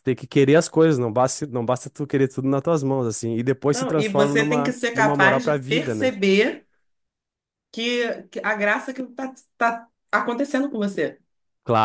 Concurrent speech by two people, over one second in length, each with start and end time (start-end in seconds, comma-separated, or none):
3.7-6.1